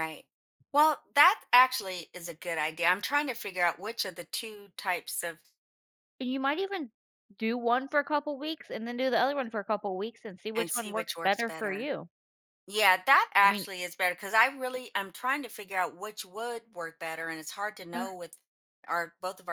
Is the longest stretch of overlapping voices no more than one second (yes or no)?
no